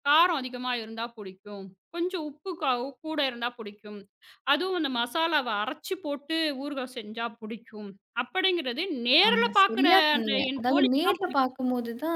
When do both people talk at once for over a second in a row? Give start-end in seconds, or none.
9.3-11.5